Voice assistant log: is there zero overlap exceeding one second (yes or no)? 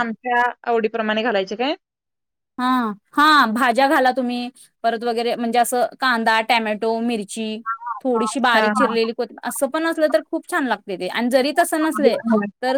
yes